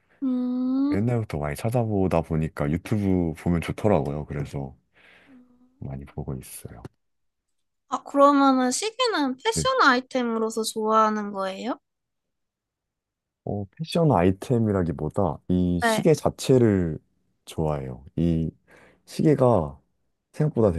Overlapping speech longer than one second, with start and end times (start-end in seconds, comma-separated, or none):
none